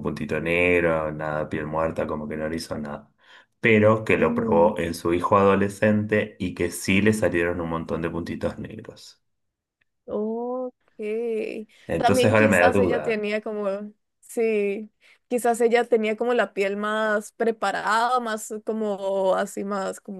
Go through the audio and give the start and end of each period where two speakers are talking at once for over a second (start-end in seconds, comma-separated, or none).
12.0-13.2